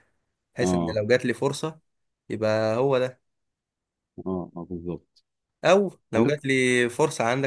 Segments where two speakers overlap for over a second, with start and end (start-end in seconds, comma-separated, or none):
none